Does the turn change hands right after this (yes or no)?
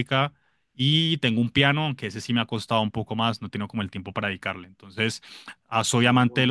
no